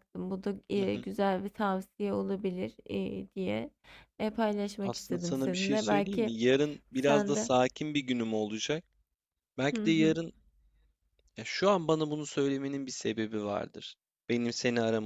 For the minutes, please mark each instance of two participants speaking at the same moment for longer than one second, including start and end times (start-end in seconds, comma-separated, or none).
4.8-6.3